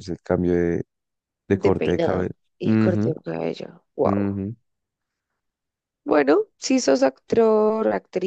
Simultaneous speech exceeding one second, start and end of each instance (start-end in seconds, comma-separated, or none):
1.5-3.1